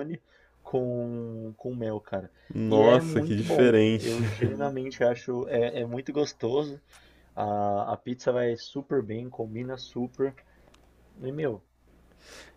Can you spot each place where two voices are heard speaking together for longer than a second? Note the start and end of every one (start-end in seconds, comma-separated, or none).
2.7-4.1